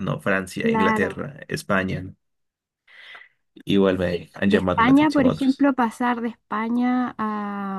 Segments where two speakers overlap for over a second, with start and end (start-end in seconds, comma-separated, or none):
4.4-5.7